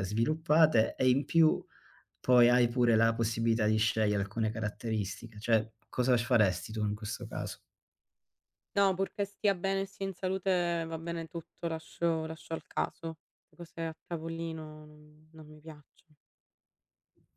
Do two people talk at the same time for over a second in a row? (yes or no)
no